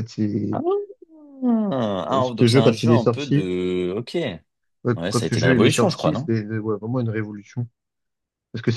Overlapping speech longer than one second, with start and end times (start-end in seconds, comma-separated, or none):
2.1-3.5, 4.9-6.3